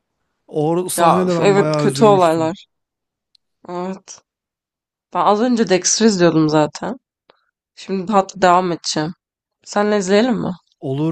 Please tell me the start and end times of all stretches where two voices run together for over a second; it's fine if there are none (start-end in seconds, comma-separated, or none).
0.9-2.5